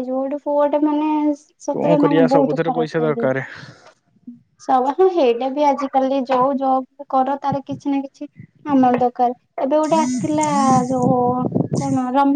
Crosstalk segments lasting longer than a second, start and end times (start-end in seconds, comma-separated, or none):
1.7-3.3